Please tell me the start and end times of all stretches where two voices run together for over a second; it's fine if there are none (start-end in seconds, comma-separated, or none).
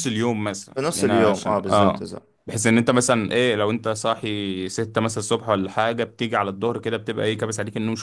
0.7-2.1